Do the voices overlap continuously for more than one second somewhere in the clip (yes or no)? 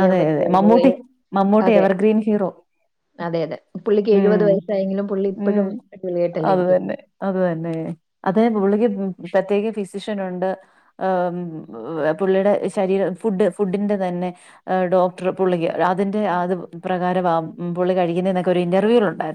no